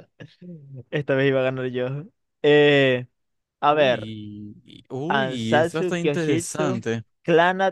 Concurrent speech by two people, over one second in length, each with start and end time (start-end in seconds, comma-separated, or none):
5.1-6.8